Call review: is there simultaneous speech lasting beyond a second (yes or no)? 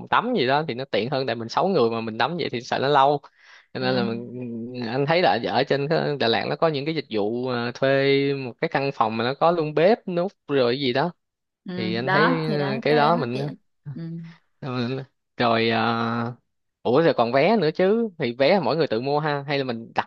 yes